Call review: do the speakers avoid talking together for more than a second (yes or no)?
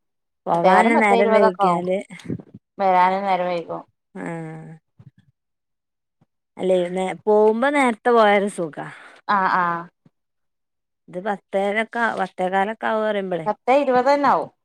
no